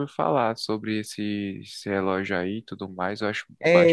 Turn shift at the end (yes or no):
yes